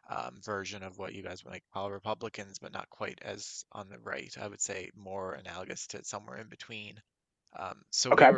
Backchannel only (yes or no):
yes